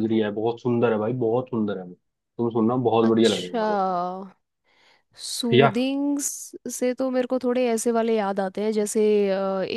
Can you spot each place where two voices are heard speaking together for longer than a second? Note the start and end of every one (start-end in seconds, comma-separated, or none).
none